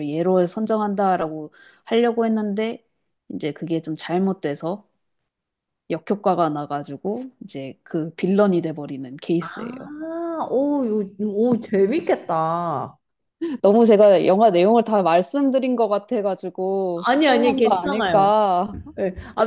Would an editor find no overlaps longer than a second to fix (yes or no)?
no